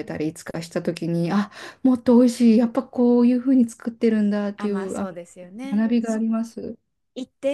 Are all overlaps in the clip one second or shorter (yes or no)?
yes